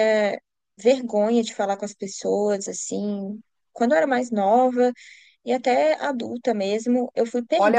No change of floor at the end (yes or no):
no